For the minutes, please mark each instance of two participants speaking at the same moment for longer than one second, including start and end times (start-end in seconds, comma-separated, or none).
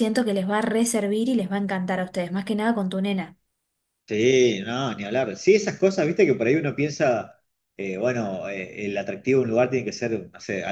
none